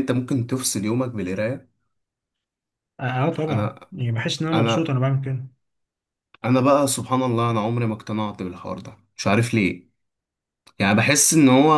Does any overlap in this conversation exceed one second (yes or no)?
no